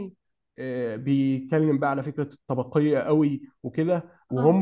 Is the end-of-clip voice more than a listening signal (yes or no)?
no